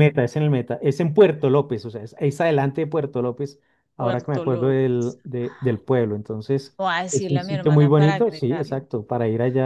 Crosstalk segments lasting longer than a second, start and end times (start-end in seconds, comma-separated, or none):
4.0-5.2, 6.8-8.9